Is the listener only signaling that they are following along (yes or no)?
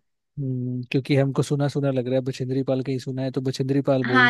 no